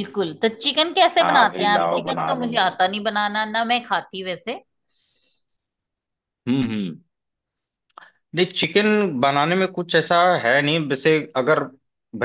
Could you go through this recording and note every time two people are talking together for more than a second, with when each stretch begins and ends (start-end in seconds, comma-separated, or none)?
1.2-2.8